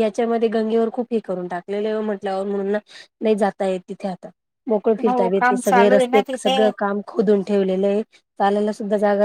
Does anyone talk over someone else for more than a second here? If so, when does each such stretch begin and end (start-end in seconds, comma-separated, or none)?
5.1-6.6